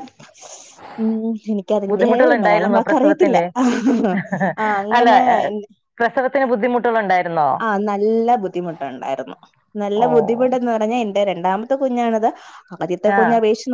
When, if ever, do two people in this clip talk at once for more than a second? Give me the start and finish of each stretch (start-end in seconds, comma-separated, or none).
1.9-3.4